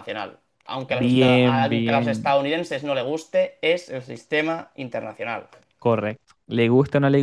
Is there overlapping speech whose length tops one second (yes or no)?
yes